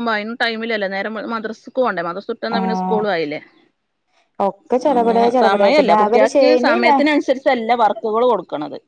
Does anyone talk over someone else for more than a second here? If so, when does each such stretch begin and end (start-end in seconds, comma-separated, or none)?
4.9-6.9